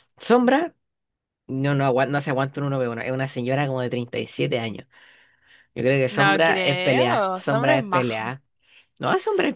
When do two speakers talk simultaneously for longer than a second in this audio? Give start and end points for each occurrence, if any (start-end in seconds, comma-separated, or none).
6.1-8.1